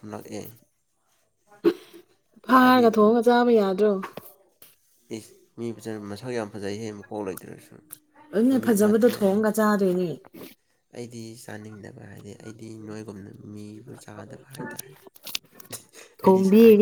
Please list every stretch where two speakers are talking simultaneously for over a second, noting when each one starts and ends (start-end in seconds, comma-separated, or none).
none